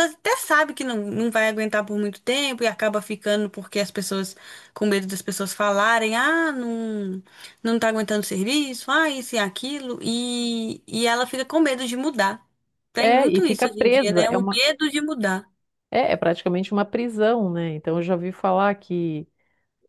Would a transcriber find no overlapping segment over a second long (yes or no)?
no